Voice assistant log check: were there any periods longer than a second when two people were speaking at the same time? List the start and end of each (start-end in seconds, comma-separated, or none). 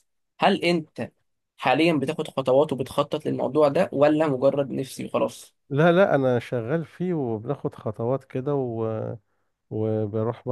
none